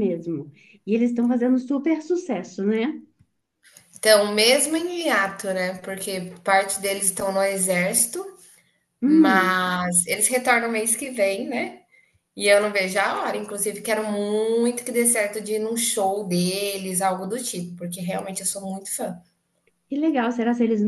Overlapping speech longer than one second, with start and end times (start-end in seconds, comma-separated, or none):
none